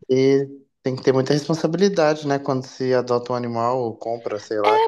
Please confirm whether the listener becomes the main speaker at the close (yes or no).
yes